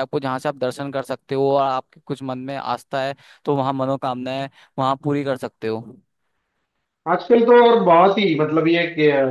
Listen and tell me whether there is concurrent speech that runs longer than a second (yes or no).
no